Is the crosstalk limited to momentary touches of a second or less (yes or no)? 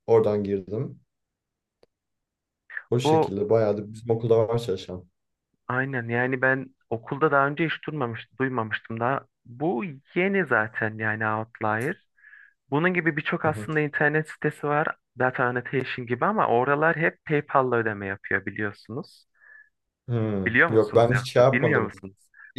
no